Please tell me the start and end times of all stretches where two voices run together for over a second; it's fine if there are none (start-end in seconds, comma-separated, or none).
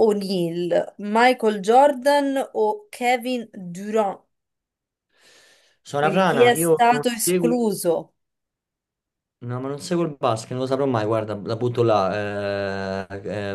6.0-7.6